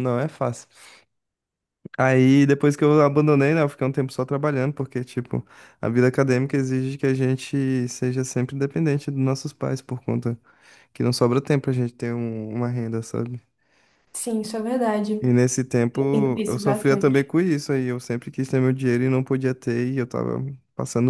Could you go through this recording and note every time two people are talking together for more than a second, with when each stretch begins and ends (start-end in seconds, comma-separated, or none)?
15.7-17.3